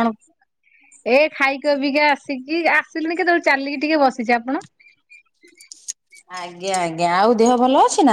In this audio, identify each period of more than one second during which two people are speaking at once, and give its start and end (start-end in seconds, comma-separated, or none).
none